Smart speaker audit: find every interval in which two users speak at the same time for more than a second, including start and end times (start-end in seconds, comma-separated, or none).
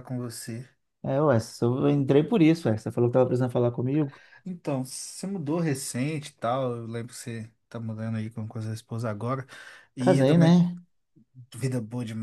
none